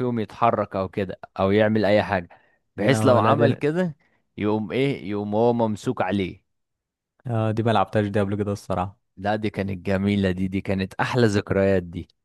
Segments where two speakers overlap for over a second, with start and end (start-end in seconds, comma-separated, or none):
none